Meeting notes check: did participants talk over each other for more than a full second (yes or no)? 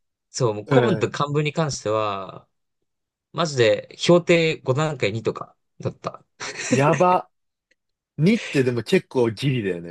no